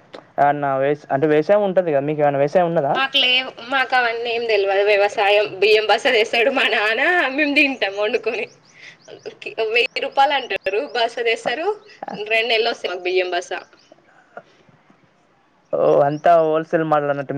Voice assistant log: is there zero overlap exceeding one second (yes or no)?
yes